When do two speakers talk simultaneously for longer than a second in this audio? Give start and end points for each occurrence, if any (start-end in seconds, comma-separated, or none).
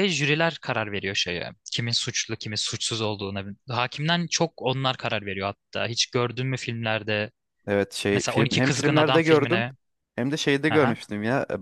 8.1-9.6